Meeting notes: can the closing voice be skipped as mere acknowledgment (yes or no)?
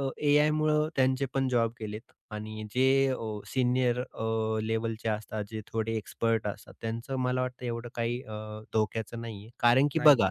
yes